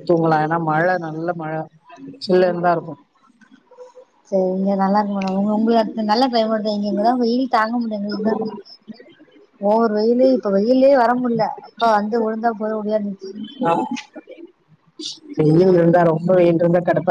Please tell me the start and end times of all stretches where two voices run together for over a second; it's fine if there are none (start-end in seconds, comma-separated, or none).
none